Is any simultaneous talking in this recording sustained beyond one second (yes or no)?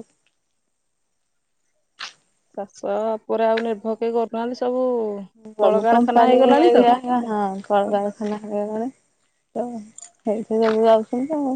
yes